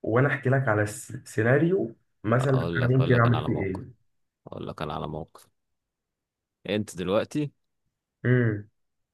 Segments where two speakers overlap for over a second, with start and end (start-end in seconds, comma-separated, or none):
2.4-3.8